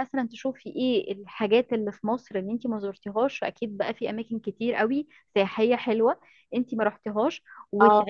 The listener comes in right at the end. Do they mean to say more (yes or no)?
no